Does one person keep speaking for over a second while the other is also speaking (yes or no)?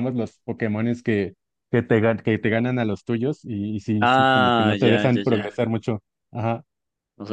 yes